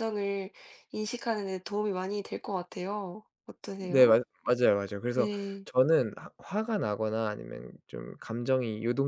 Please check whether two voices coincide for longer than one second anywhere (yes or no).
no